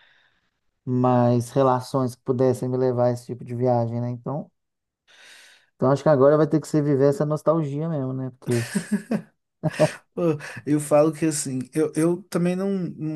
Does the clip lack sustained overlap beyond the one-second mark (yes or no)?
yes